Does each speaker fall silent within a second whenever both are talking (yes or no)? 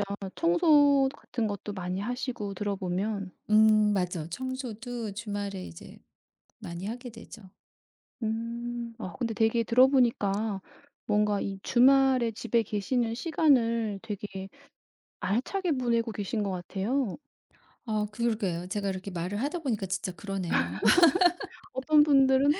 yes